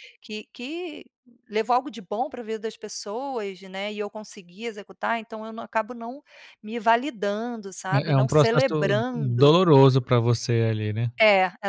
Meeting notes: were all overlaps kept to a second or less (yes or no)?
no